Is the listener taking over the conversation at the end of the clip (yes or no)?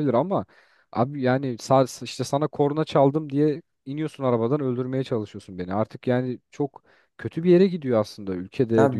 yes